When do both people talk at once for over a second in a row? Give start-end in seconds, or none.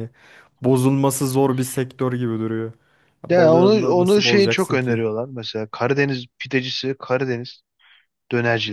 3.3-5.0